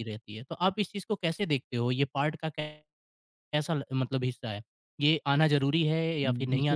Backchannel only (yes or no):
yes